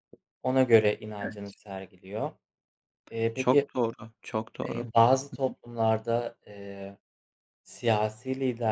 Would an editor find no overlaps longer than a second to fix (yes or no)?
yes